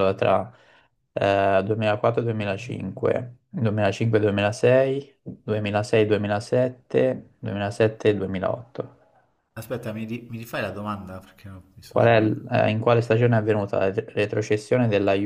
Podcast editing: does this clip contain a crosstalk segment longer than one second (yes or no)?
no